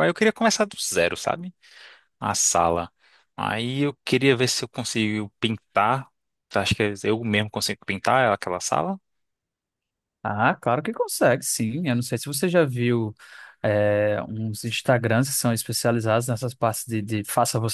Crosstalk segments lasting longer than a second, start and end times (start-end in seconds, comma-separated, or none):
none